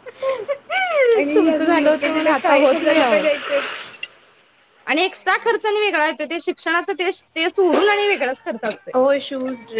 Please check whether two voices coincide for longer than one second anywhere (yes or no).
yes